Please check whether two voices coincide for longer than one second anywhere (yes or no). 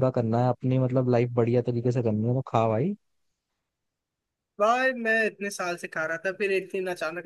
no